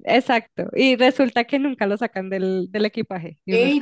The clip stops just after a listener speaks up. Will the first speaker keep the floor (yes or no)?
no